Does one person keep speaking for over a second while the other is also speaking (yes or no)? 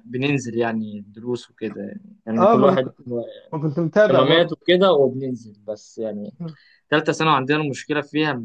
no